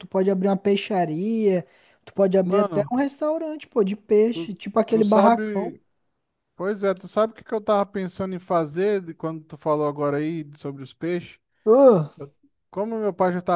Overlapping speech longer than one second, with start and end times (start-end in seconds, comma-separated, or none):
4.3-5.8